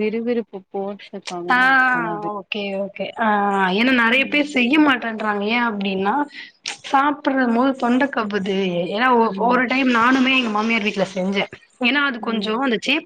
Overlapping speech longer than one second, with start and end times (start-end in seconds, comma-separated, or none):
none